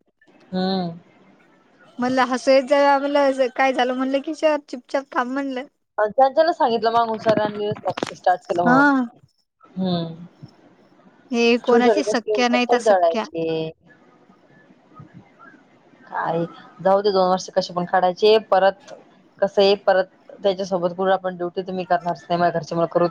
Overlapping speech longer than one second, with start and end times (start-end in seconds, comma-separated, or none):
11.7-13.2